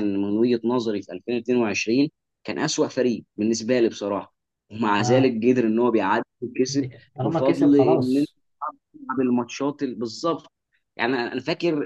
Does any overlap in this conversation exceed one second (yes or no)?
yes